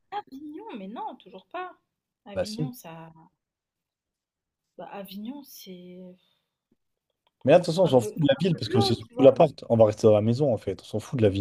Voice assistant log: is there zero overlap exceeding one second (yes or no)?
no